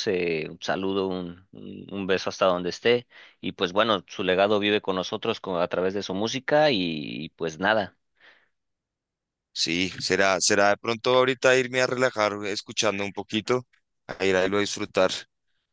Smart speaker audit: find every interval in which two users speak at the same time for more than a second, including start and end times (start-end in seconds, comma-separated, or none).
none